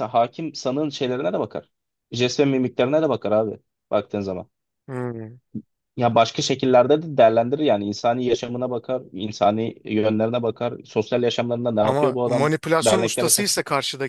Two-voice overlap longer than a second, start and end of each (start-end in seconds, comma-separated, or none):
11.8-13.5